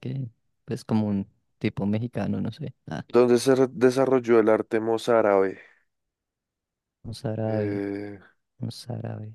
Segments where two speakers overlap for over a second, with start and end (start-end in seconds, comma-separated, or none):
none